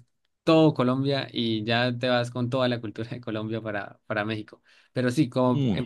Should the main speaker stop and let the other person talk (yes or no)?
no